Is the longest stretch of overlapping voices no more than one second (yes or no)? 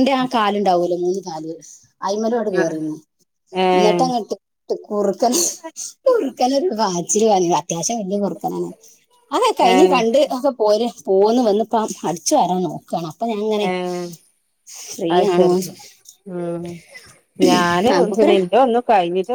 yes